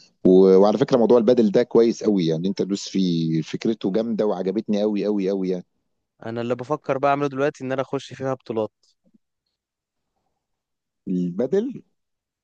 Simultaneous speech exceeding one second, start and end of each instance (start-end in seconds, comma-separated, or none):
none